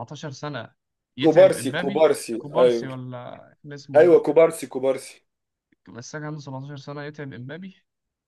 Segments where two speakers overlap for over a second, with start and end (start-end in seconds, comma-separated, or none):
1.2-2.9